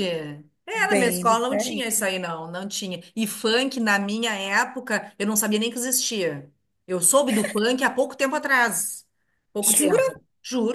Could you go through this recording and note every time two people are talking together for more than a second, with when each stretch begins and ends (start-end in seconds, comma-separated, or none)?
0.7-2.1